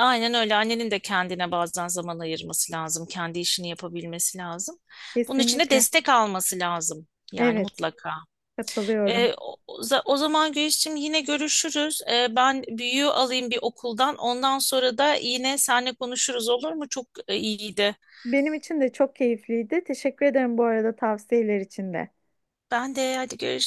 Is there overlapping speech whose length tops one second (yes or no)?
no